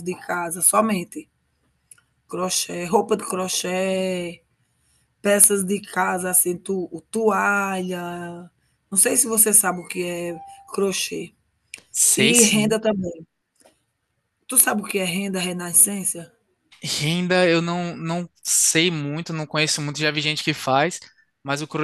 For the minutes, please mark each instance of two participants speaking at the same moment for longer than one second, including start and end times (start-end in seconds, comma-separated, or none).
none